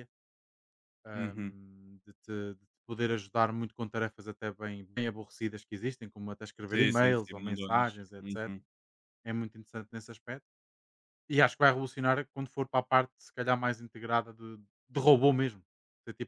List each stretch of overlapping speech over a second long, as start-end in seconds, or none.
6.7-8.6